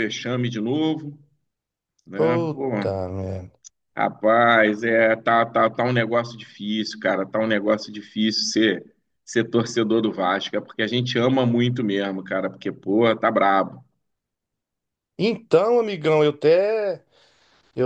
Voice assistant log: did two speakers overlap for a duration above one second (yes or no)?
no